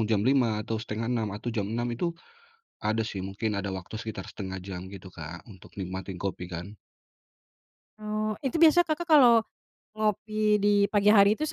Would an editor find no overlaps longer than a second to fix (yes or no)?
yes